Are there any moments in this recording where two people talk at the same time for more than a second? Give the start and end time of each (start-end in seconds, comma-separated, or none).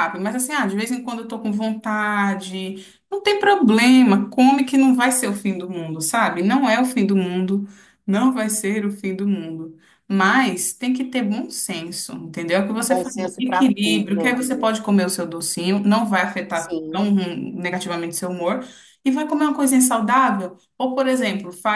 12.8-14.7